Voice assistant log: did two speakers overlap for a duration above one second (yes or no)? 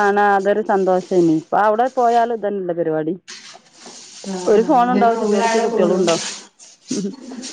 yes